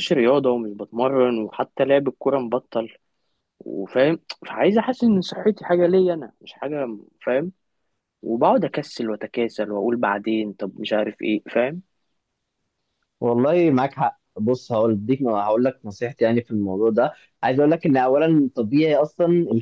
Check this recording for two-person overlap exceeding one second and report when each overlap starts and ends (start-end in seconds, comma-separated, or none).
none